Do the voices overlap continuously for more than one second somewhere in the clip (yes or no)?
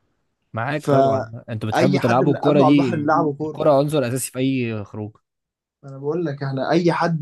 yes